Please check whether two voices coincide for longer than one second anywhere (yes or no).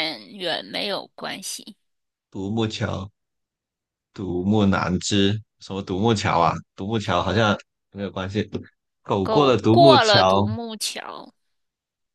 yes